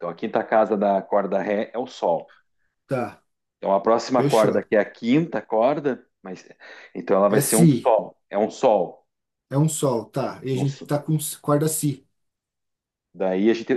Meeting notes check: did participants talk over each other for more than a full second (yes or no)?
no